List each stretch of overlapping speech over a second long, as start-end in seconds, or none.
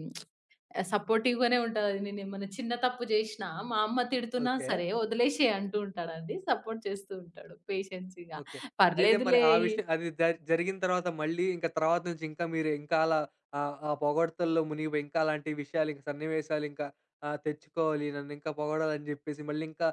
none